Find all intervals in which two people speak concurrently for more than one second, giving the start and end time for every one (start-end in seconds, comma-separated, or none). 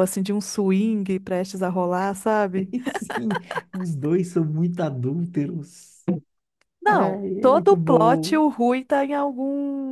6.8-8.4